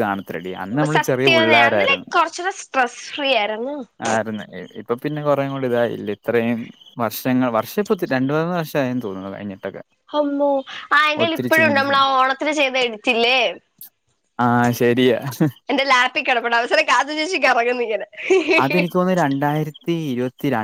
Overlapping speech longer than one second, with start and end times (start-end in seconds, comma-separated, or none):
none